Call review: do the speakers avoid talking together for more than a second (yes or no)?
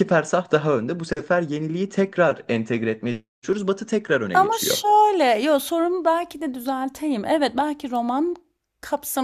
yes